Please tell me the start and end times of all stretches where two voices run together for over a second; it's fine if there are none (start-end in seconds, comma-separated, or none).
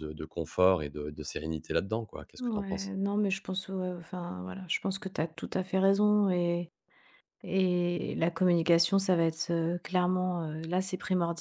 none